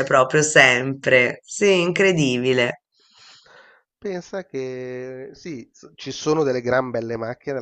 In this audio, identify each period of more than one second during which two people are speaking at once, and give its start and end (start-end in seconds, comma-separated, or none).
none